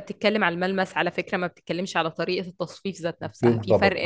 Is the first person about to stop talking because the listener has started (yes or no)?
no